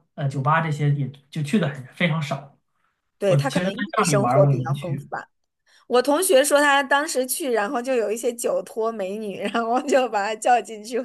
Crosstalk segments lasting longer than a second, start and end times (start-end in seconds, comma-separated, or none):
3.3-5.1